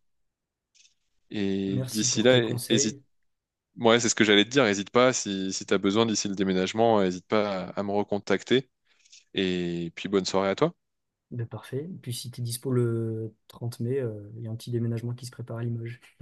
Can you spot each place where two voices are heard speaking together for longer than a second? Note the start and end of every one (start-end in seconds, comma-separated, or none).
1.7-3.0